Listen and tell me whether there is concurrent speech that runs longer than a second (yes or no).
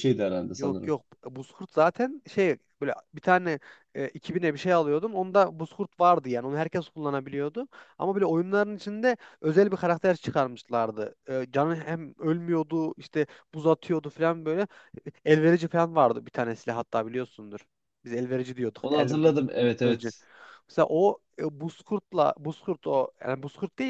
yes